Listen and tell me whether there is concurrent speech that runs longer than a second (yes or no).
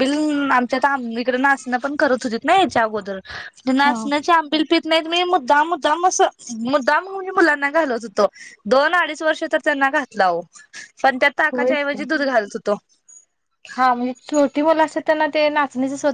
no